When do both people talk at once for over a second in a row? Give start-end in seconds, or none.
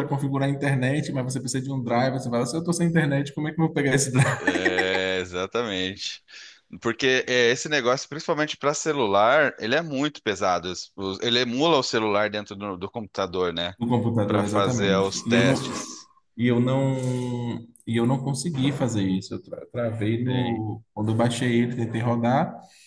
14.3-15.6